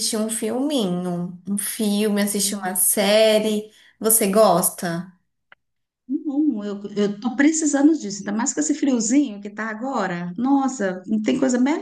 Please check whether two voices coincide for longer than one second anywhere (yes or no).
no